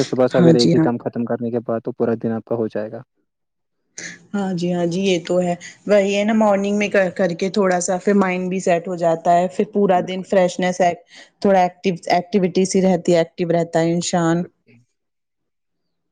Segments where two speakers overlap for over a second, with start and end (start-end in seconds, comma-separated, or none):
none